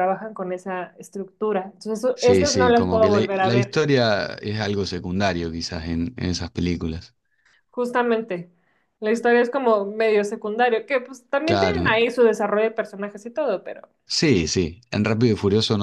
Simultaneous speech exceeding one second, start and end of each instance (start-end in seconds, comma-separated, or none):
2.1-3.8